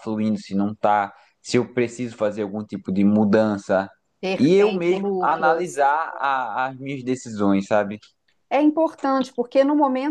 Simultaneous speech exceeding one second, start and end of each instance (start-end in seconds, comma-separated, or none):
4.4-5.8